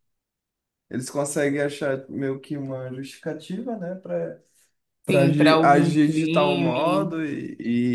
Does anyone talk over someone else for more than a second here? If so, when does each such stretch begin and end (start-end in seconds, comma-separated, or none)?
5.1-7.2